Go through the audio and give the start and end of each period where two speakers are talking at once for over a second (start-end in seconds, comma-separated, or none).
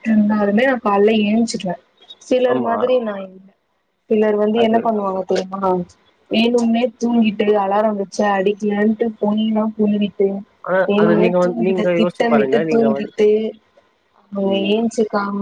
10.9-13.1